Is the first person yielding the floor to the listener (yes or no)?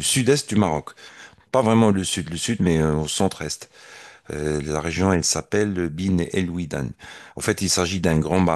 no